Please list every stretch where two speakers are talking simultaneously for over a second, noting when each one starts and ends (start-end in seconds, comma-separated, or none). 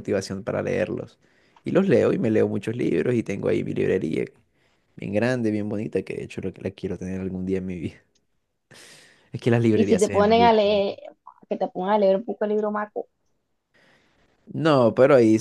9.7-10.9